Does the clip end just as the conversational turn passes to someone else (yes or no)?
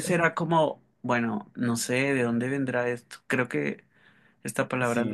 no